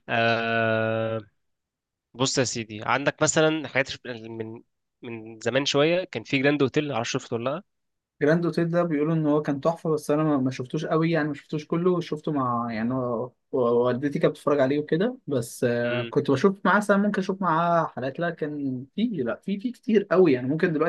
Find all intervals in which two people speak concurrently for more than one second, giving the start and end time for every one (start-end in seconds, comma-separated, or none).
none